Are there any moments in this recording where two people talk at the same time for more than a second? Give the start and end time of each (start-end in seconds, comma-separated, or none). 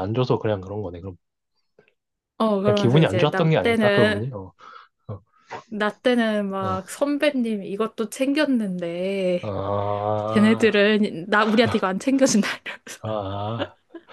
2.6-4.2